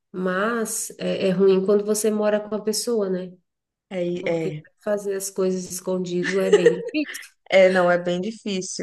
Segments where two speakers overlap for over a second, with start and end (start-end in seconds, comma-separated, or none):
none